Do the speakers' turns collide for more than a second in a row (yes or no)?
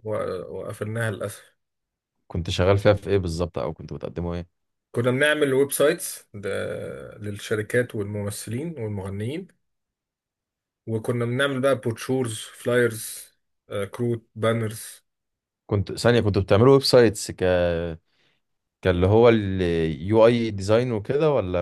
no